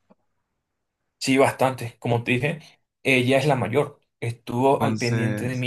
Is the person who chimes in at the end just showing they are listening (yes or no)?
yes